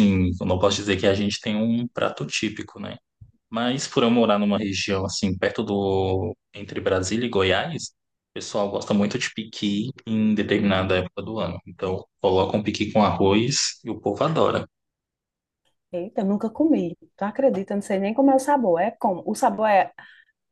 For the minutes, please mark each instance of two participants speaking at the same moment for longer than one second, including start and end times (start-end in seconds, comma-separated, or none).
none